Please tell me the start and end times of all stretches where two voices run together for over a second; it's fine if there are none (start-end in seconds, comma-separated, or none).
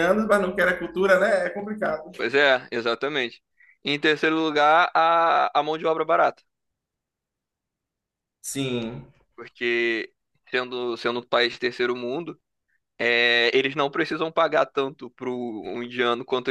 none